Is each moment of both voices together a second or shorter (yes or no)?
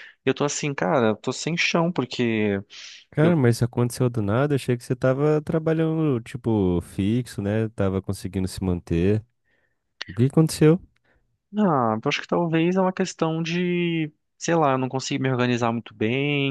yes